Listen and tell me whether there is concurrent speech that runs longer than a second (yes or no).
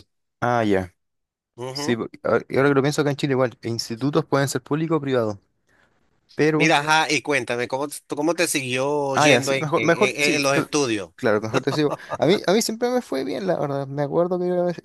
yes